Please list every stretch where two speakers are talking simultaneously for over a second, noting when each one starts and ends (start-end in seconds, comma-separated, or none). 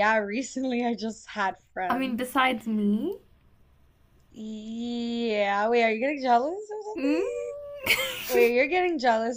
none